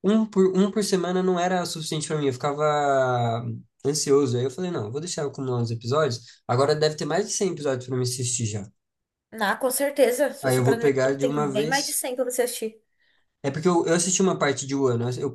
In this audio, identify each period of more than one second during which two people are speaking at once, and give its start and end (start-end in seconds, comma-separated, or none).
10.4-12.0